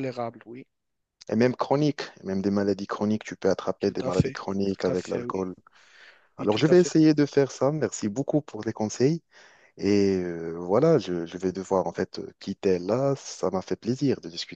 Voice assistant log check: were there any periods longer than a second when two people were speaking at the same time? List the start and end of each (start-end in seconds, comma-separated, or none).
3.8-5.4